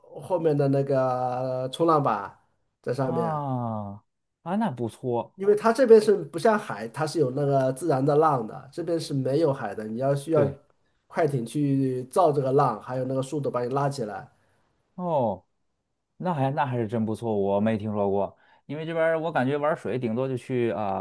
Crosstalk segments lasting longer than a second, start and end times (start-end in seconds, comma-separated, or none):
none